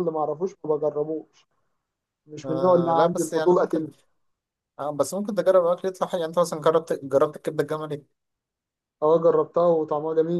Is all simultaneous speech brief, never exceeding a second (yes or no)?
no